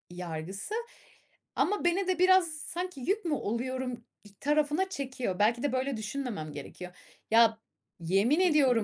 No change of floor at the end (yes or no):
yes